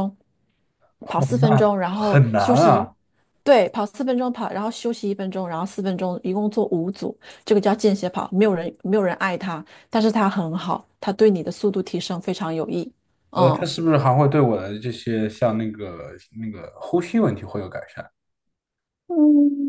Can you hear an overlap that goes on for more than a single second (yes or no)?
yes